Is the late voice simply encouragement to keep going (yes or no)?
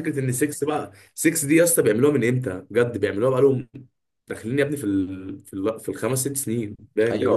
no